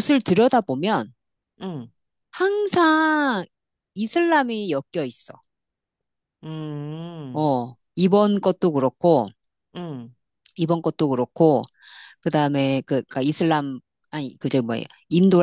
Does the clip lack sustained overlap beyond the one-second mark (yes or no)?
yes